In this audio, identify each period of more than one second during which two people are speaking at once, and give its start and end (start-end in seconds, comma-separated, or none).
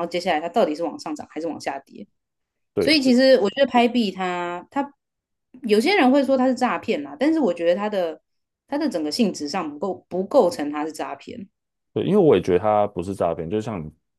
none